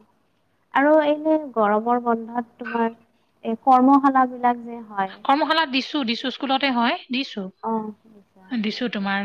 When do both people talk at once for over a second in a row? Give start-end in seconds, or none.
none